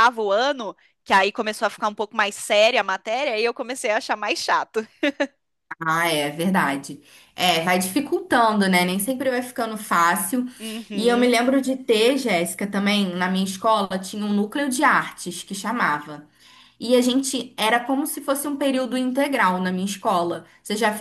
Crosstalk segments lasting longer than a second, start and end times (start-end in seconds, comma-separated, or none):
none